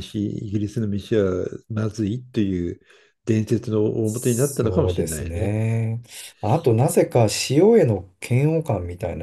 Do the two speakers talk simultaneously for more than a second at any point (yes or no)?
yes